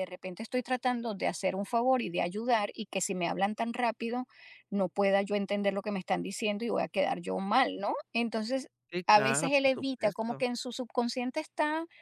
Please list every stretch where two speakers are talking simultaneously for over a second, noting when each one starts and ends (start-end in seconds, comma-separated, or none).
9.1-10.4